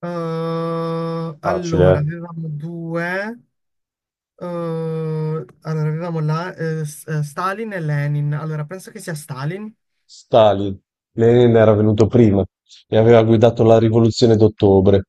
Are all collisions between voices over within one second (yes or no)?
yes